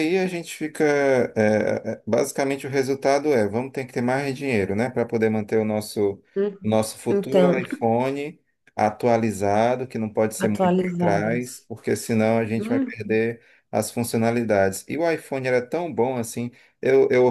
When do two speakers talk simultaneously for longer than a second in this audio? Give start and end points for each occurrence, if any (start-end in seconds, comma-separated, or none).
10.4-11.7